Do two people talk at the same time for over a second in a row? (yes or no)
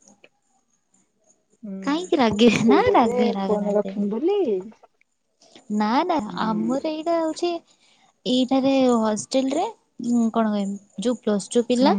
yes